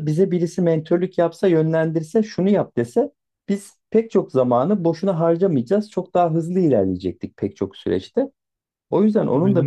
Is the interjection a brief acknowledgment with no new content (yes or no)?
yes